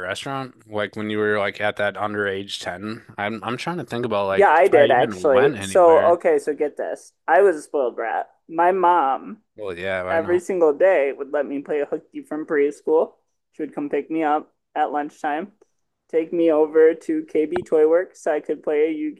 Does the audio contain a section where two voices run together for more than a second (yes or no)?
yes